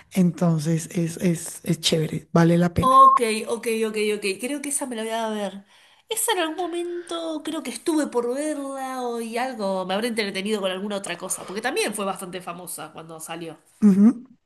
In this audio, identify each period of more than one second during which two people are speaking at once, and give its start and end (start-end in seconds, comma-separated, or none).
none